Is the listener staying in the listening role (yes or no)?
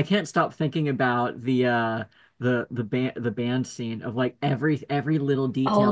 yes